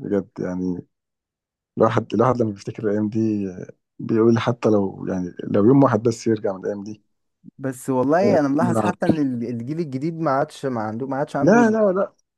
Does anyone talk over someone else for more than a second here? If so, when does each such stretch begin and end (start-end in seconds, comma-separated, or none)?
none